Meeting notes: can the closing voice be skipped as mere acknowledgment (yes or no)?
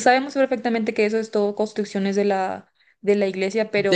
no